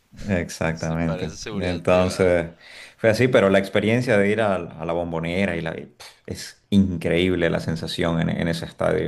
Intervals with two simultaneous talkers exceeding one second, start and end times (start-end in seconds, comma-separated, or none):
0.7-2.4